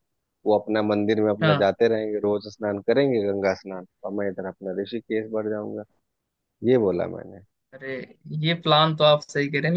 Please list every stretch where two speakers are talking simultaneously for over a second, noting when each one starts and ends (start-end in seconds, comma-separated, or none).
none